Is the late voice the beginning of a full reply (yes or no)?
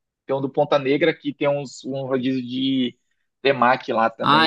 yes